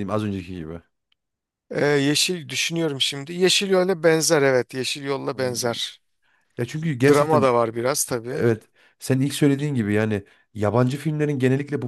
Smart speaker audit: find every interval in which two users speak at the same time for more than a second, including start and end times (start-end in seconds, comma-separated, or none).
none